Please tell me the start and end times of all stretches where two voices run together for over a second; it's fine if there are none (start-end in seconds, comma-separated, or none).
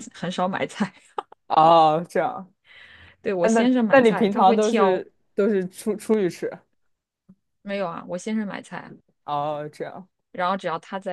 3.4-5.0